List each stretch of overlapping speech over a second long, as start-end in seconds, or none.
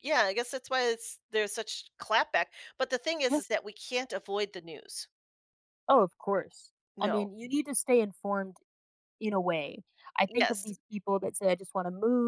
none